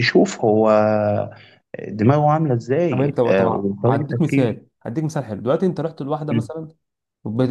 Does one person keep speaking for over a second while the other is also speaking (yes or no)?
yes